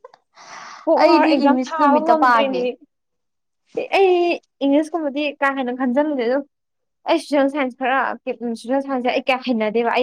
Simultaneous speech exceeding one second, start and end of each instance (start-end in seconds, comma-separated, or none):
1.0-2.6